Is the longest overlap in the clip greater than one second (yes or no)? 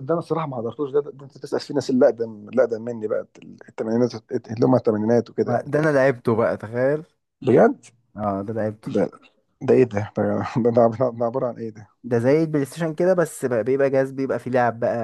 no